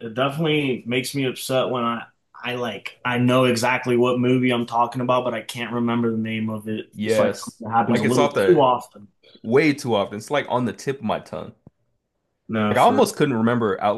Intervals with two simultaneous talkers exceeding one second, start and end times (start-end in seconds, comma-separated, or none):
6.9-8.7